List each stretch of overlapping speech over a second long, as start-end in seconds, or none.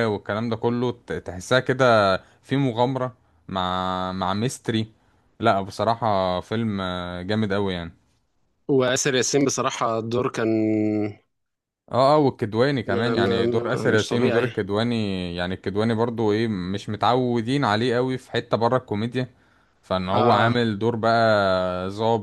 12.9-14.5